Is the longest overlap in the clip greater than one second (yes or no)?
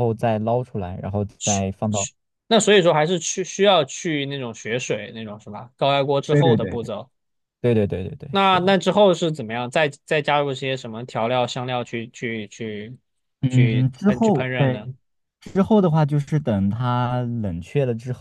yes